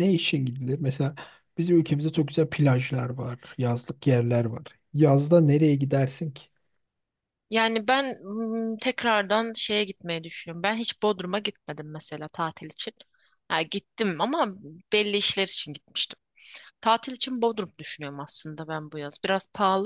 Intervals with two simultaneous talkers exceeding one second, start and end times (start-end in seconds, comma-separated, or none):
none